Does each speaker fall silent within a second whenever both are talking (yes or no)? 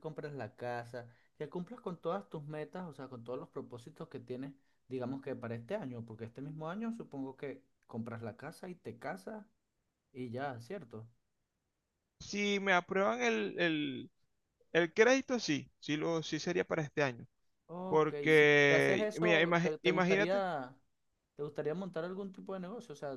no